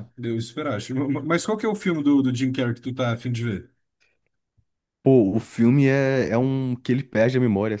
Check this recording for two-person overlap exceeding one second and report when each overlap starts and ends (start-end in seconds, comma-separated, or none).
none